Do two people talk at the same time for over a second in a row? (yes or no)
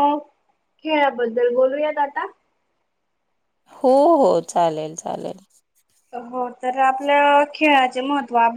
no